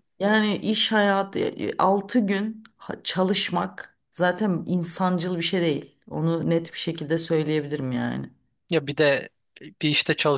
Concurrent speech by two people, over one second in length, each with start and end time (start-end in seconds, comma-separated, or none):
none